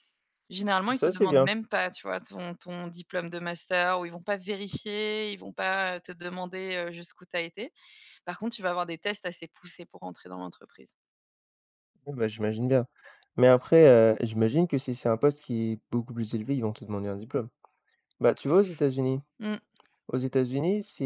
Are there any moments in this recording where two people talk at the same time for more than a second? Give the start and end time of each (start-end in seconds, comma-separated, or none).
none